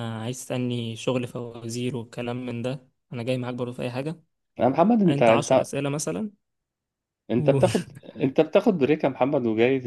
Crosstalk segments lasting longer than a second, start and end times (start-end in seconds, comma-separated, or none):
none